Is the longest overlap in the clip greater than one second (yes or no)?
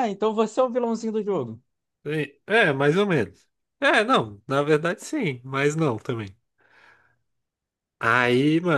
no